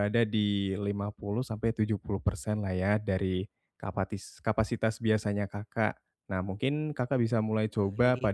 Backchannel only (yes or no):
yes